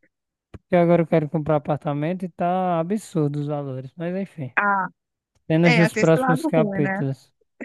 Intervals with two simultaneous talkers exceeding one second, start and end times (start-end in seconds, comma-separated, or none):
5.6-7.0